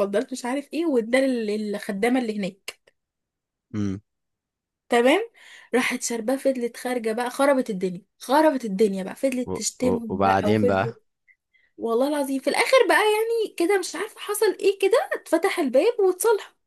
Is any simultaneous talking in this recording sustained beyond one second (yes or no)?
yes